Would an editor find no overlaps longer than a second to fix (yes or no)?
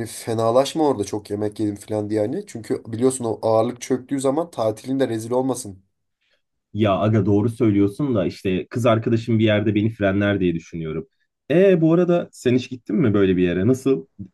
yes